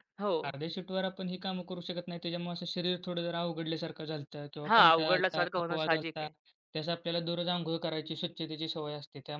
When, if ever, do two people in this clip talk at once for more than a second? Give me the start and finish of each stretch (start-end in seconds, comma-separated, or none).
4.7-6.3